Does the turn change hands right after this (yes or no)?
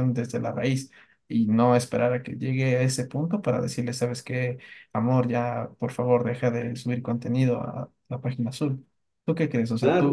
yes